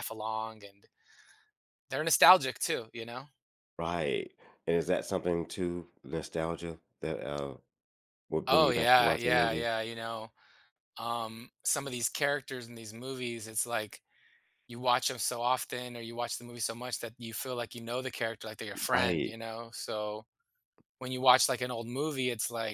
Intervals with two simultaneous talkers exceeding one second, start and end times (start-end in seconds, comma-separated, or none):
8.5-9.7